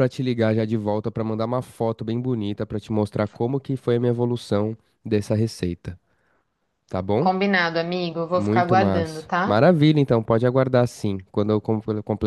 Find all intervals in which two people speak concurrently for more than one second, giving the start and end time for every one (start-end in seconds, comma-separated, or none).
8.3-9.6